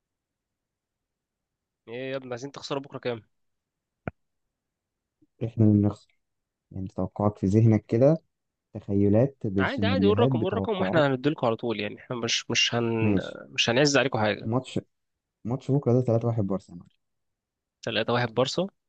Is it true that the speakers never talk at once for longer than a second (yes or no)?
no